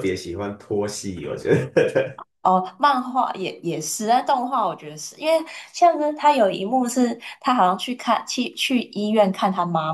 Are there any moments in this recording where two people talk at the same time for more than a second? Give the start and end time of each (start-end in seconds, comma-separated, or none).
none